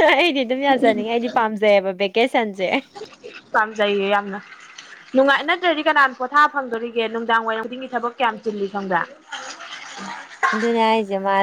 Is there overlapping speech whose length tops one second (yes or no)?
no